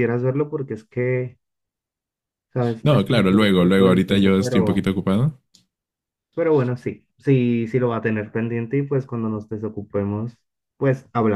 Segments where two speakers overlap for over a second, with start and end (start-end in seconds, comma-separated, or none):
2.8-4.9